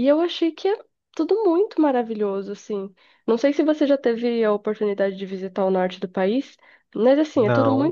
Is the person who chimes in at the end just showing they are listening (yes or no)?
yes